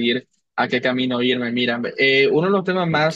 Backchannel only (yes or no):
yes